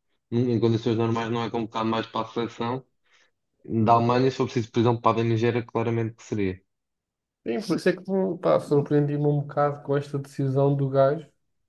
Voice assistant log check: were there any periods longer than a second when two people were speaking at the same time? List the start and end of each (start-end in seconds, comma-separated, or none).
none